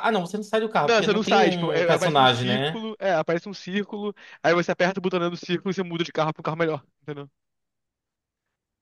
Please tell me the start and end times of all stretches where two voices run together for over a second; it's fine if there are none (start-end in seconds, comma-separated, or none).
0.8-2.8